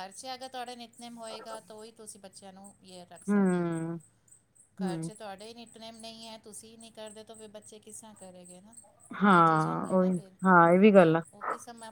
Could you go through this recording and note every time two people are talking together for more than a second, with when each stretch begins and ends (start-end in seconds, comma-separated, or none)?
none